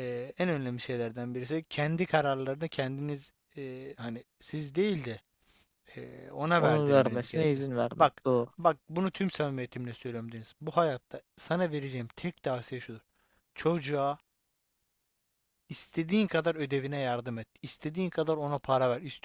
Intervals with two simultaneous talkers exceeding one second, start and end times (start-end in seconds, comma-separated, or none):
6.6-8.5